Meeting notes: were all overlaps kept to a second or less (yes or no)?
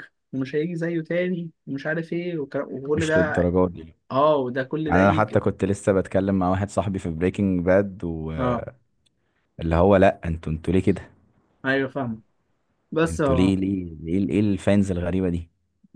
yes